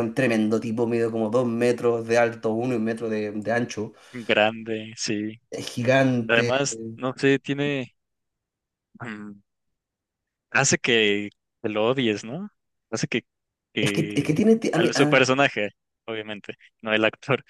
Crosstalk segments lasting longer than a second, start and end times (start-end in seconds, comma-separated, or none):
13.8-15.3